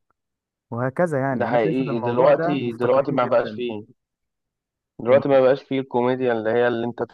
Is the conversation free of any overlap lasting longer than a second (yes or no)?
no